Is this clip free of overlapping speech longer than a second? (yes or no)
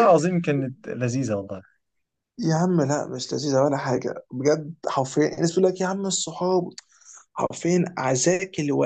yes